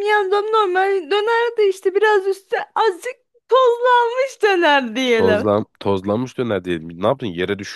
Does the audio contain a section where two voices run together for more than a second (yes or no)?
no